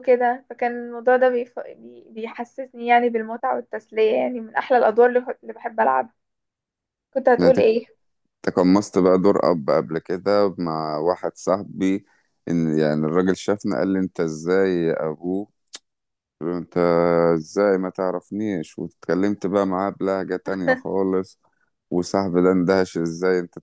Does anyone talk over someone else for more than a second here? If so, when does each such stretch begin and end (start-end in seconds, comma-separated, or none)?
none